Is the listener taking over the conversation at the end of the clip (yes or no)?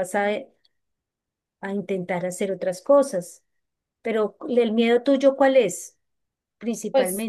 yes